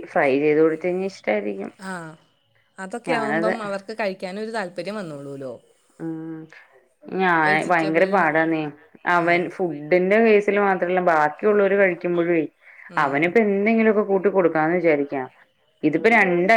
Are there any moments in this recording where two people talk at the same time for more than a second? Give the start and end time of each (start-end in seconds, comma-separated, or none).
none